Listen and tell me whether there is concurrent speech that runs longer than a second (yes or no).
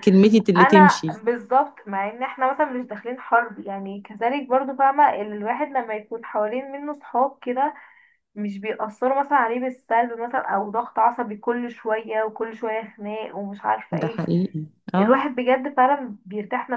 no